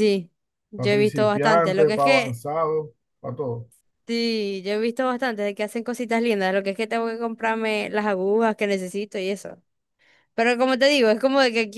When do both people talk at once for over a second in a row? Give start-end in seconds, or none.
0.7-2.4